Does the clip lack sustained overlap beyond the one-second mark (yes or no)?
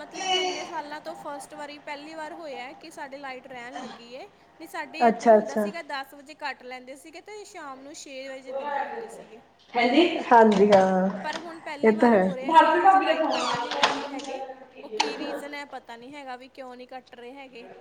no